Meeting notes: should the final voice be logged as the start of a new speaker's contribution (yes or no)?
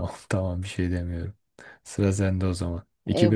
yes